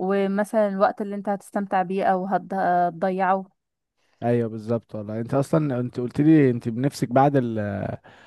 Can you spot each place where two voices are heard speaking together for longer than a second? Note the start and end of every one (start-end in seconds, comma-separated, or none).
none